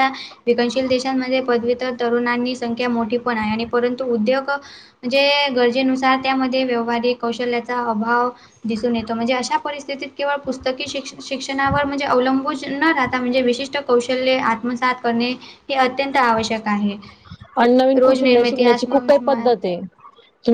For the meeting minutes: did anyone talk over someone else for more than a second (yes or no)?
yes